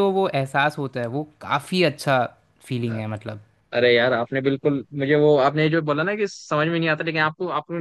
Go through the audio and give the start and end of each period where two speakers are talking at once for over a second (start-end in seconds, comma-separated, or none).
none